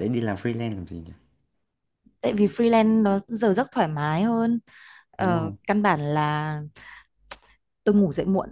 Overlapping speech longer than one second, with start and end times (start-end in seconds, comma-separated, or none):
none